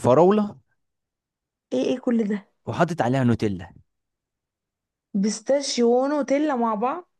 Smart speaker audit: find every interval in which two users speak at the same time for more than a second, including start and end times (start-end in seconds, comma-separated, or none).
none